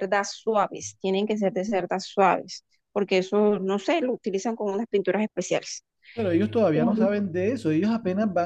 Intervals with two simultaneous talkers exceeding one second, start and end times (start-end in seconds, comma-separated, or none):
none